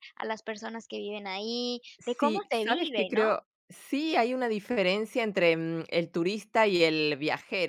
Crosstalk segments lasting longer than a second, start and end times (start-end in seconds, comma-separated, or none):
2.0-3.3